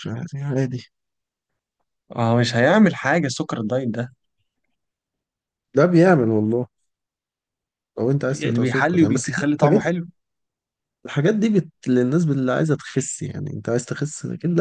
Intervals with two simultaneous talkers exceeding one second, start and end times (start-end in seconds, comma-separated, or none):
8.3-9.8